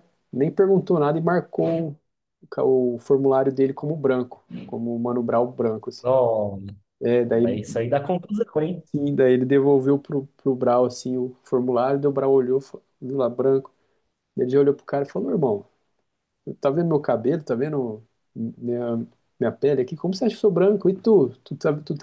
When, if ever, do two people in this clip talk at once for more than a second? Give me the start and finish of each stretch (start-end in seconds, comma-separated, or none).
none